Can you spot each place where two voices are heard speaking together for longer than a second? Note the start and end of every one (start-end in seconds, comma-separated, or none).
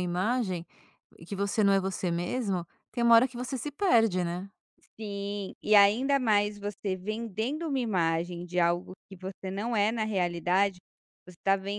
none